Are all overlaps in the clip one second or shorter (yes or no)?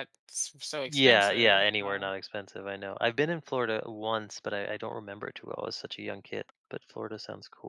no